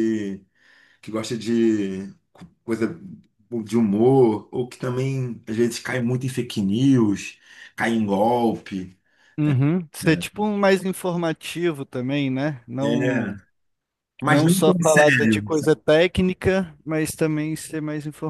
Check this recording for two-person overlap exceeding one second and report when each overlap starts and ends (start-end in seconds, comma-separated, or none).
14.2-15.4